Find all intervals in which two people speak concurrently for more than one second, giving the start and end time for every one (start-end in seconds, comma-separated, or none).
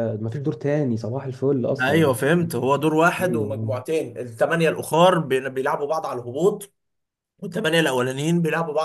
none